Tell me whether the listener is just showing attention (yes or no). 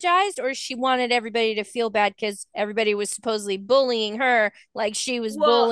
no